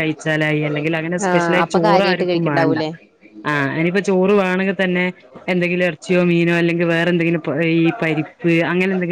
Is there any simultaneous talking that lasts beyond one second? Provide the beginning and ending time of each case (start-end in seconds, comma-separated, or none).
1.3-2.8